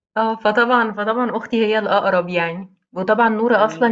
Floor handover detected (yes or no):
no